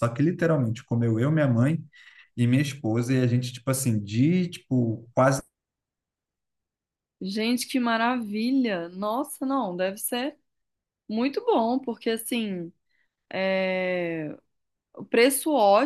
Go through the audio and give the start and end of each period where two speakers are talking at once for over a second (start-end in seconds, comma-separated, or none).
none